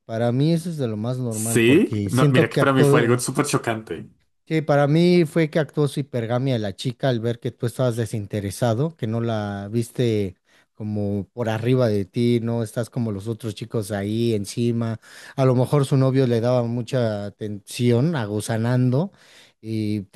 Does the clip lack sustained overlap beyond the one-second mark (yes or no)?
no